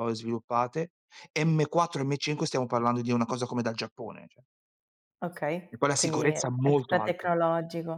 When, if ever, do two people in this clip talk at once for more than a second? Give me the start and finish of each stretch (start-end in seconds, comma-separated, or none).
5.7-7.3